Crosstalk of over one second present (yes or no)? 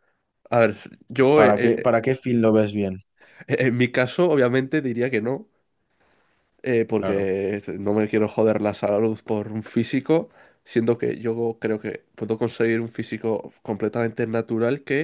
no